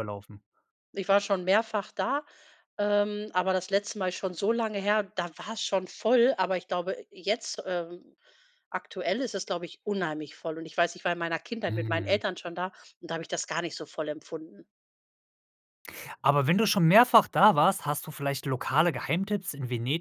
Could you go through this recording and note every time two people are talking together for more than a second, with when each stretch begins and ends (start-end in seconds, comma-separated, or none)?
none